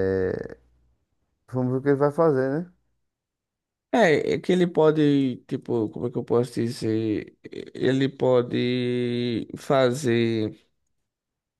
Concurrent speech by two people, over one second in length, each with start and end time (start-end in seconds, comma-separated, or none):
none